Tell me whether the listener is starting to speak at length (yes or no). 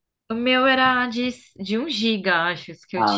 yes